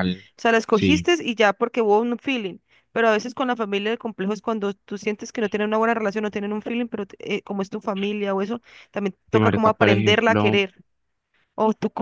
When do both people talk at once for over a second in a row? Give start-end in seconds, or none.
9.3-10.6